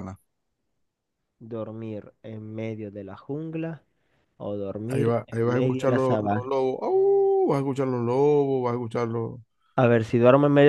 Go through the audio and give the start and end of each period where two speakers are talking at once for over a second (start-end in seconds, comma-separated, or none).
4.9-6.5